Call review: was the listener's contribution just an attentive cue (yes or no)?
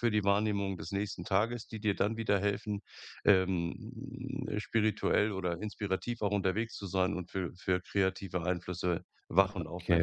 no